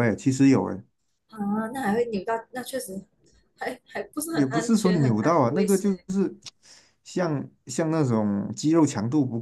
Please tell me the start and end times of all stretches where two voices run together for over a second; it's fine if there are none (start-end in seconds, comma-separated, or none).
4.3-6.0